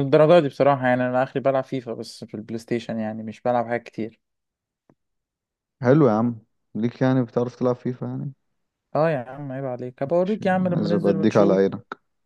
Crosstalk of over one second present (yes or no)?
yes